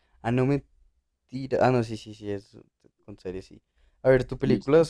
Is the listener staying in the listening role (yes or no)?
yes